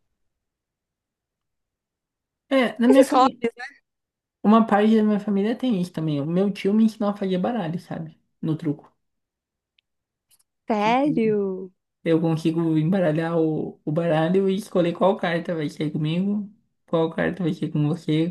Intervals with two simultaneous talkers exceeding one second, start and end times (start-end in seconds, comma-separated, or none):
none